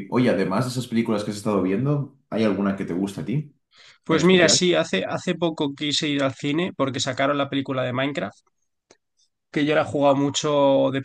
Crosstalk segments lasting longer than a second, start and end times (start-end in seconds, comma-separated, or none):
none